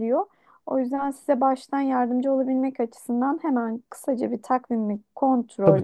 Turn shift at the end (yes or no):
no